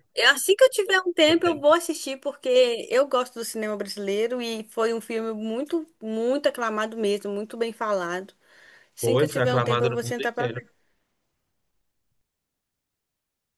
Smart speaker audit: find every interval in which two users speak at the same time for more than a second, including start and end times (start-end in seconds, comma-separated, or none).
9.0-10.6